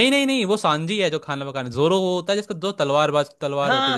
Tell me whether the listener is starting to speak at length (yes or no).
yes